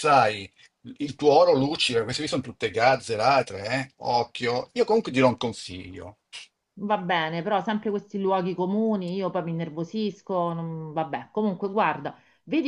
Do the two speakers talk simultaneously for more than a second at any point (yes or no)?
no